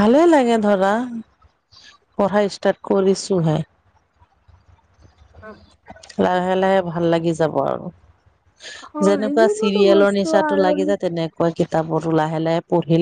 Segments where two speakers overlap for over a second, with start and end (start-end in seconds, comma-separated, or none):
9.1-10.8